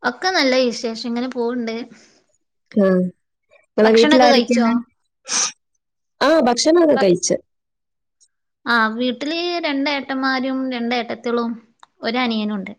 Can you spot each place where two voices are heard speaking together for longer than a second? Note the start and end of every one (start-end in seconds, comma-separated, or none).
none